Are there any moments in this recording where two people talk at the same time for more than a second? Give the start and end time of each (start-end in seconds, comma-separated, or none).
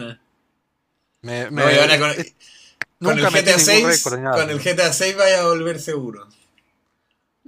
3.0-4.7